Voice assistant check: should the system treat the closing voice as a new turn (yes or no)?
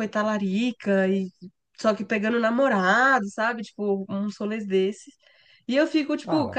no